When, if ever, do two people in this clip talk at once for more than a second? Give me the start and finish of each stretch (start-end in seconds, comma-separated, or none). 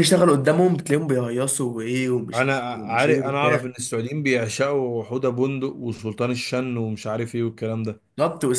2.3-3.6